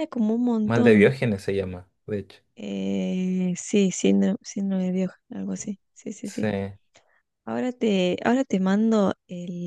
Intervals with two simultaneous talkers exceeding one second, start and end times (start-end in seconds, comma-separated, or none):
none